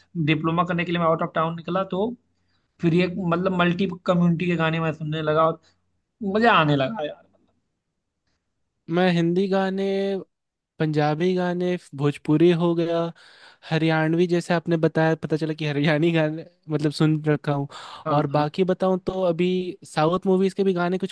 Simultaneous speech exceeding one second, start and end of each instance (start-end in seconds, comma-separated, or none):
none